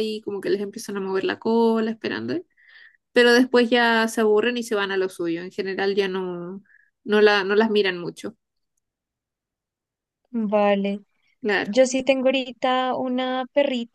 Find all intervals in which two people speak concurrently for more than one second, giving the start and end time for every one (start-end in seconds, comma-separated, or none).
none